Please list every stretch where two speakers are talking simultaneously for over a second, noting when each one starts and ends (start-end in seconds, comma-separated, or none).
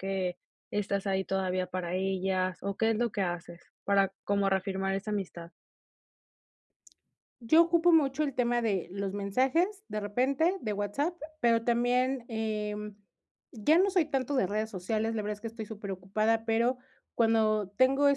none